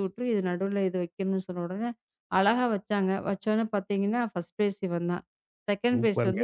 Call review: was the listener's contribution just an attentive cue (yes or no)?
yes